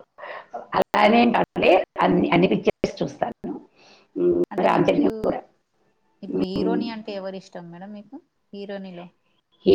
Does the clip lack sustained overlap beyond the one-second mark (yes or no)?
yes